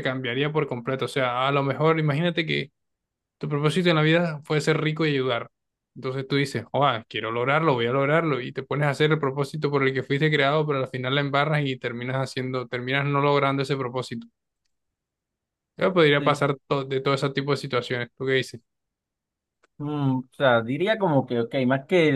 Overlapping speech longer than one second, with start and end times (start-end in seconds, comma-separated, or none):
none